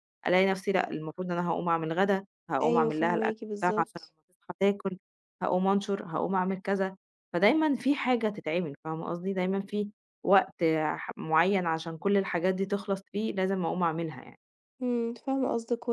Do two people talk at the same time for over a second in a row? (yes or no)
yes